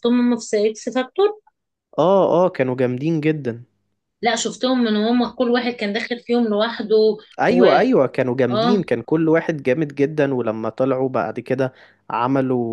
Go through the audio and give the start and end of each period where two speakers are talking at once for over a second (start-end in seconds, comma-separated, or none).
none